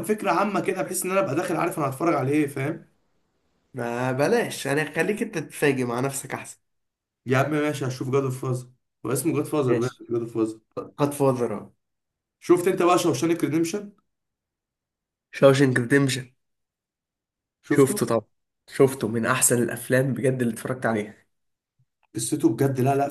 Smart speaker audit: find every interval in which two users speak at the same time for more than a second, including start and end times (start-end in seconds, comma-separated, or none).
none